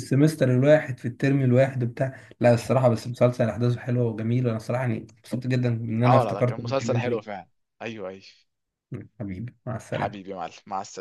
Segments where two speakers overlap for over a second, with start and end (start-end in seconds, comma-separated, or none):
6.1-7.4